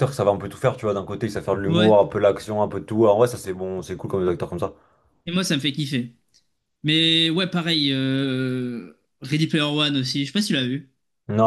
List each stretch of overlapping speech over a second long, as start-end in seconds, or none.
none